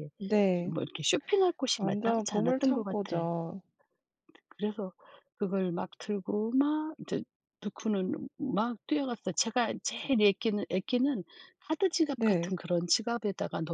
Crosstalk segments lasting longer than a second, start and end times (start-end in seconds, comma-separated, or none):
1.8-3.0